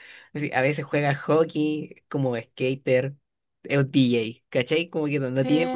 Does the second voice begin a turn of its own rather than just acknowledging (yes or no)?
yes